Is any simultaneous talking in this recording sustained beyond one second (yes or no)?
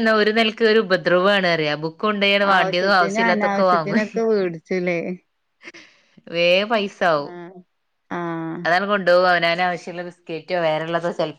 yes